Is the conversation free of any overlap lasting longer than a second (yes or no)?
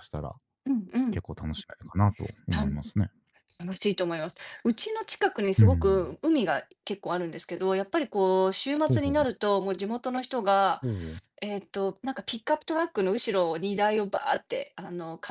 yes